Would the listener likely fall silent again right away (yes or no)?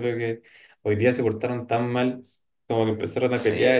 yes